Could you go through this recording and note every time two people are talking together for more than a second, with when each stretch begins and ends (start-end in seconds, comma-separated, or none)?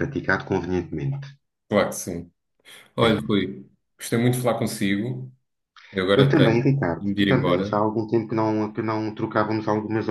6.1-7.8